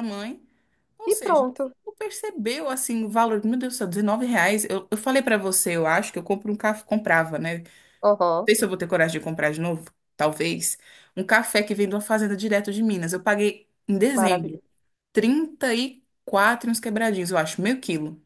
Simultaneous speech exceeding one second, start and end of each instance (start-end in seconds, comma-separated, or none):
none